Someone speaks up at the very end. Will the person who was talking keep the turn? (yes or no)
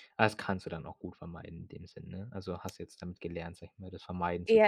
no